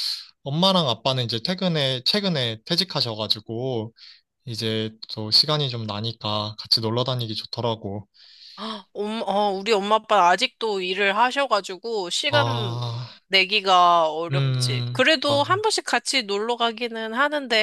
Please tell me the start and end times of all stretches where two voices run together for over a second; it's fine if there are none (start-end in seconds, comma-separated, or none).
14.3-15.6